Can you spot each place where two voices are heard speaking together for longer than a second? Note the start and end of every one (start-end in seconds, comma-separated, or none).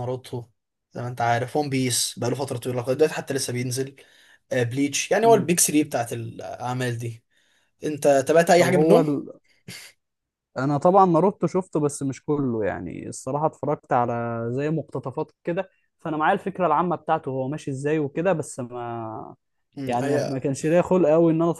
none